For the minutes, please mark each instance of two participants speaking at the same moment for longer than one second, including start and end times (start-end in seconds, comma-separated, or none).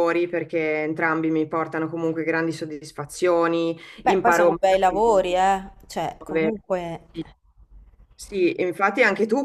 4.0-5.2